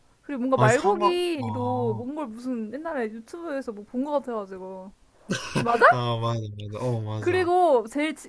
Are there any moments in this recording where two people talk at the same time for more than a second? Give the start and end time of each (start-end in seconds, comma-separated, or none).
0.5-2.0